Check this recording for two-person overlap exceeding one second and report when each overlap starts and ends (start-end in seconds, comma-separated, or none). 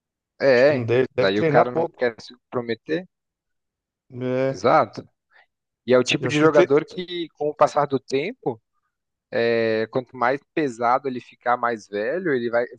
0.6-2.1